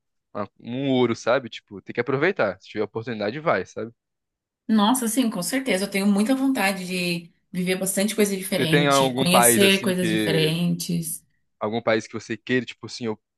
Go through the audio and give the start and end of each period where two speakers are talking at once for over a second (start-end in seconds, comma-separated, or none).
8.5-10.6